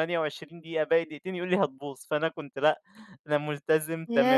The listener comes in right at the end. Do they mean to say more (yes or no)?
yes